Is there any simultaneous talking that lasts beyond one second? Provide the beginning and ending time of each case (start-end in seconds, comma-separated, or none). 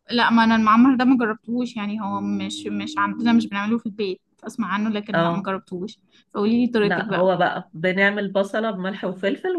none